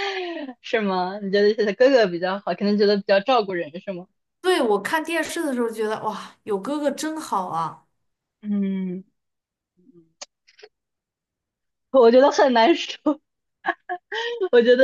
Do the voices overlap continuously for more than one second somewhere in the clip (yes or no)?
no